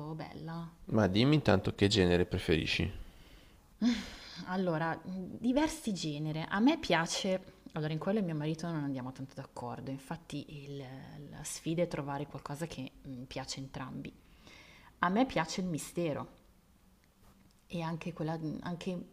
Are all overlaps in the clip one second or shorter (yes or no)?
yes